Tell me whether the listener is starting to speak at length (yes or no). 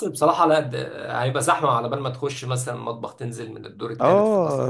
yes